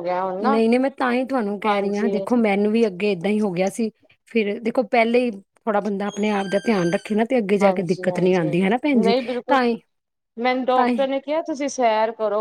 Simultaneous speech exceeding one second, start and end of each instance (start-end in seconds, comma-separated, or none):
none